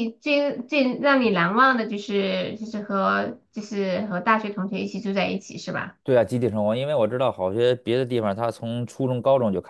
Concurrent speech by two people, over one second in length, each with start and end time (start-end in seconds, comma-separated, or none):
none